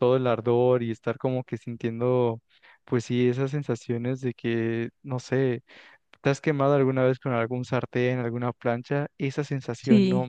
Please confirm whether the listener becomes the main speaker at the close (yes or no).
no